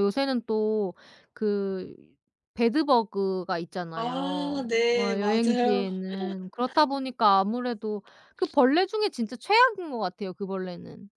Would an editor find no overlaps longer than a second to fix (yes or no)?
no